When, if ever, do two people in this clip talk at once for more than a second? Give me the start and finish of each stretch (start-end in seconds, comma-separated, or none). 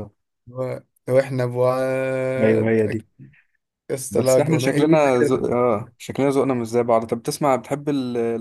4.1-5.5